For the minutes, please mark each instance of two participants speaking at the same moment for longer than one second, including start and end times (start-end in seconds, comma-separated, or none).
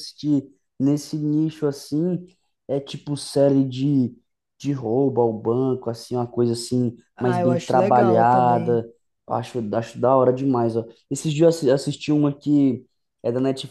7.2-8.8